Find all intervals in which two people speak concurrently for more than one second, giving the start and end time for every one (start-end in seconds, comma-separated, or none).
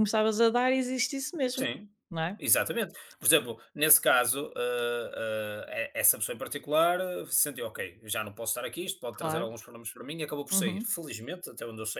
none